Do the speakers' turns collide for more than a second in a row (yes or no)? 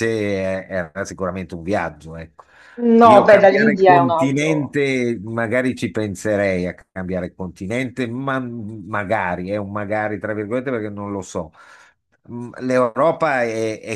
yes